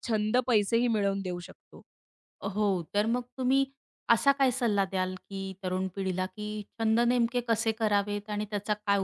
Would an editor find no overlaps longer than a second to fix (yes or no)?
yes